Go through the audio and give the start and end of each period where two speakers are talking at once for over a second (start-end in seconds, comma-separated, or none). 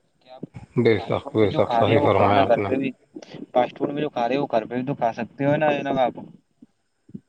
0.9-2.7